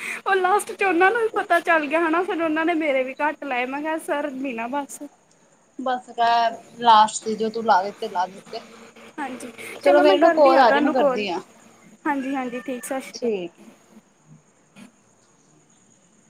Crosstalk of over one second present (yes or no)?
yes